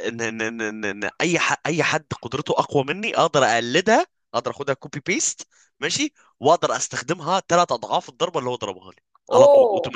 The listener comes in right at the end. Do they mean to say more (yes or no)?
yes